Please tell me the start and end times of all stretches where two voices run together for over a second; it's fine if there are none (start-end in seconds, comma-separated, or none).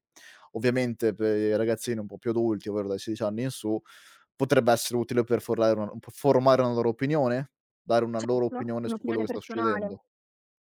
8.2-10.0